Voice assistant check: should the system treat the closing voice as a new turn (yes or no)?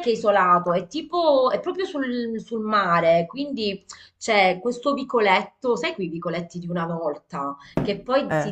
no